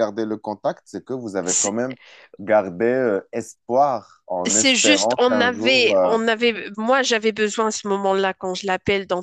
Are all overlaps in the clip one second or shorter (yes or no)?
no